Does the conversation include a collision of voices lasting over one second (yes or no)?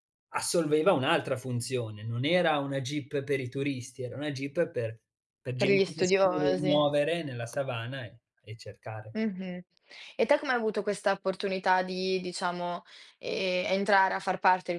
yes